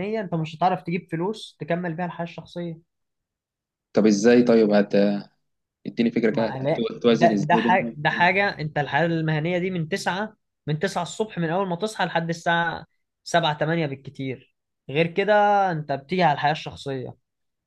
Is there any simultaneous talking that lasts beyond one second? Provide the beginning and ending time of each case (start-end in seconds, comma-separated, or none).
6.3-8.0